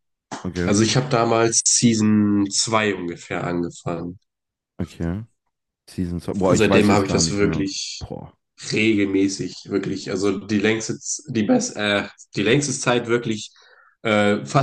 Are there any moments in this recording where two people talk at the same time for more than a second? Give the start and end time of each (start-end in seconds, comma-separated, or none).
6.5-8.1